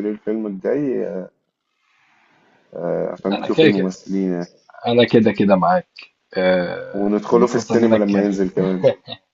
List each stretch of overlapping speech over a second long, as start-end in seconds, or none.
7.0-8.3